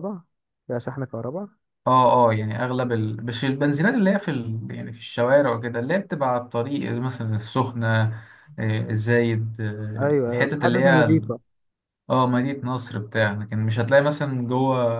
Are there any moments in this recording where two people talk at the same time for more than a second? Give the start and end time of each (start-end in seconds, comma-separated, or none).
10.0-11.3